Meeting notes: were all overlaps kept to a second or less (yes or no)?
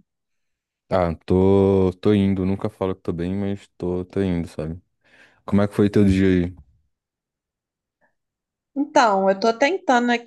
yes